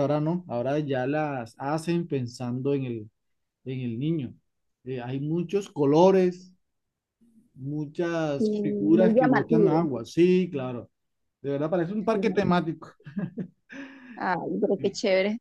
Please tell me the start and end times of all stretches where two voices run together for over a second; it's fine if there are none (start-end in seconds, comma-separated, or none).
8.4-9.9